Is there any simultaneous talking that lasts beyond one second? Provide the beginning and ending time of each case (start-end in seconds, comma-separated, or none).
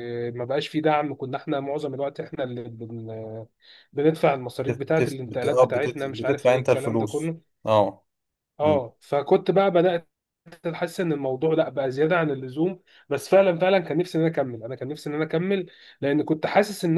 4.7-7.4